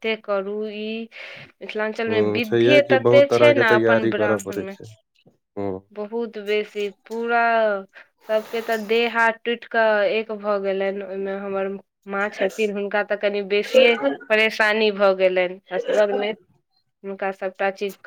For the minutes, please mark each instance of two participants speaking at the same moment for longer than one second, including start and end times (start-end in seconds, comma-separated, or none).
2.1-4.8